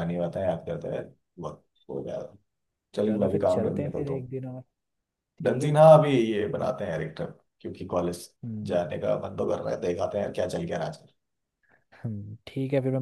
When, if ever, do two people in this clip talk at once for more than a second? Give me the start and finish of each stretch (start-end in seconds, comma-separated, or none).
3.0-4.3